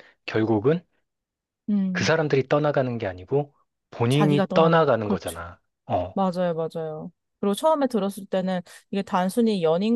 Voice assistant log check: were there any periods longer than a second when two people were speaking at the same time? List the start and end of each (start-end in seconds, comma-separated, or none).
4.1-5.4